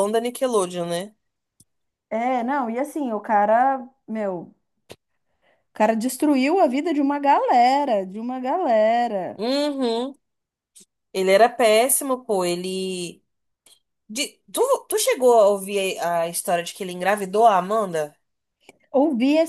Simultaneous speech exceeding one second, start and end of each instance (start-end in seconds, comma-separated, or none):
none